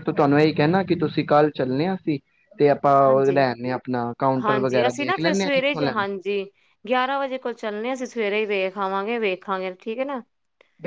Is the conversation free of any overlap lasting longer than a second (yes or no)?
no